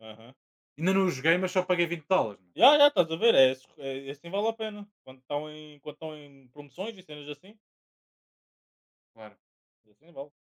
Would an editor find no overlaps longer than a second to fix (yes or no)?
yes